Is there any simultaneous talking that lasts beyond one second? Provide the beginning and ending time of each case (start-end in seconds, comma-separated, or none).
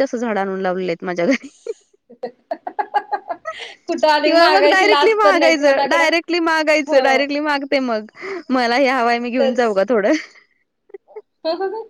4.2-6.0